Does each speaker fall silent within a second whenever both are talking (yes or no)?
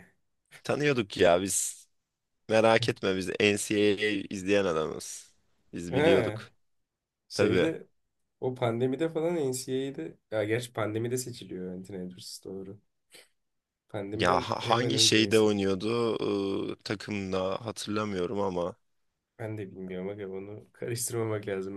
no